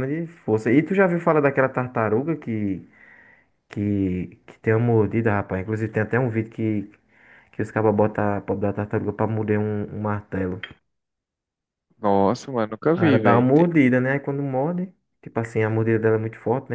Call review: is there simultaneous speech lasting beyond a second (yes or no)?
no